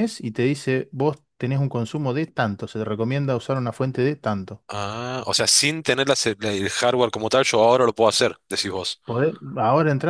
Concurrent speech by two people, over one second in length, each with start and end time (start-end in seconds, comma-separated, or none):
none